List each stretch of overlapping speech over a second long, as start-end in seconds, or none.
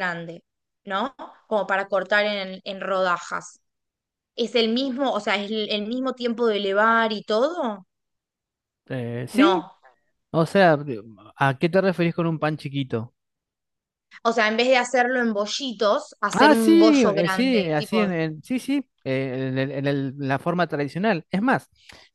16.3-18.1